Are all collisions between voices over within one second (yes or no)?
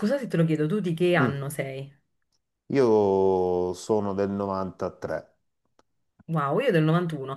yes